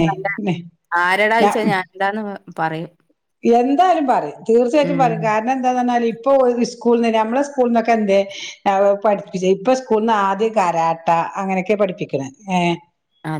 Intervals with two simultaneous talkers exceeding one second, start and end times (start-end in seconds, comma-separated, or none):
none